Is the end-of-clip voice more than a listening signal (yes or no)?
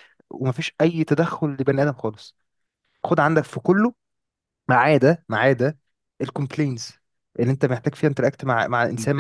yes